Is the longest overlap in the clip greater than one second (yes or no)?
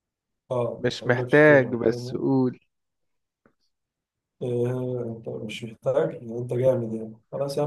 yes